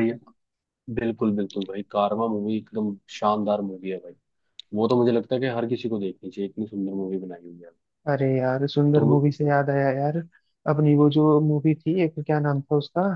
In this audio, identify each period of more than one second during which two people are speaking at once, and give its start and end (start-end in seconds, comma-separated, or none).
none